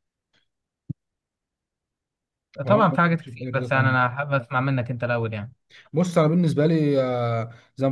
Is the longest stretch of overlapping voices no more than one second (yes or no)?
no